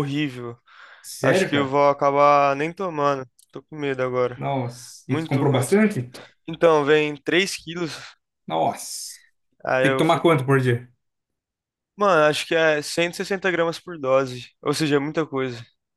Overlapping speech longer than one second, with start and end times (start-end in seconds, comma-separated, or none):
none